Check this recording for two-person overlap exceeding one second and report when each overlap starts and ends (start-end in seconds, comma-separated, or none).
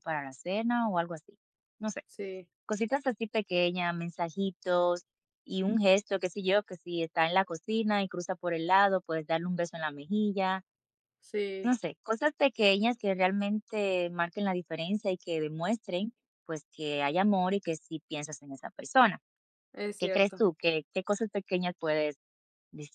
none